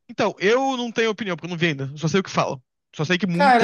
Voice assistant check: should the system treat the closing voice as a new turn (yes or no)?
yes